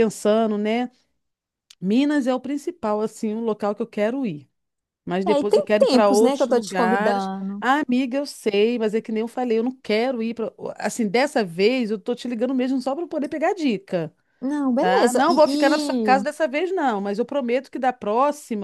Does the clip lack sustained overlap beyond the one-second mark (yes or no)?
no